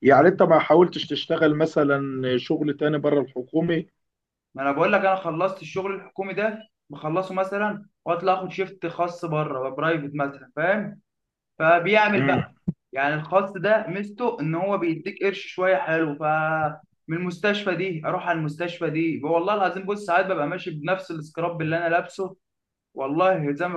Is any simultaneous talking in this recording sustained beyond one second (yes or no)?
no